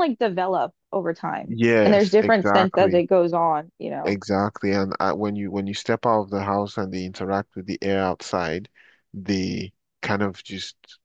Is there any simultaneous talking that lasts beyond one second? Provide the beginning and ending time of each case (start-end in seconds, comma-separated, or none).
1.4-3.0